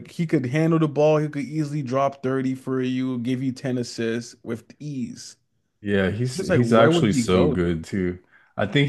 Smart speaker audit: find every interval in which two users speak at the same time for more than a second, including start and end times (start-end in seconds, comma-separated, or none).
6.3-7.8